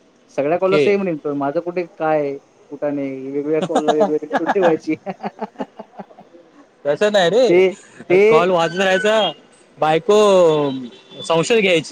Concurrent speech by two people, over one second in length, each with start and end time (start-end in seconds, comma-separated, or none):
none